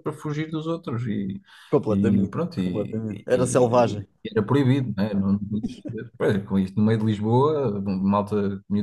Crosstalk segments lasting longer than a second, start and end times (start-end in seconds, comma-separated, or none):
1.9-4.1